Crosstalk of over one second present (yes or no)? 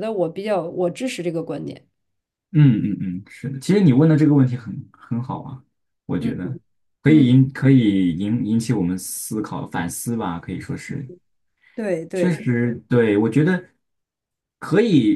no